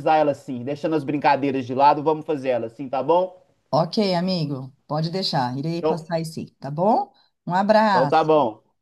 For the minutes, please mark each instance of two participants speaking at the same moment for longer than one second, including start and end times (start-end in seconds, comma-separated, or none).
none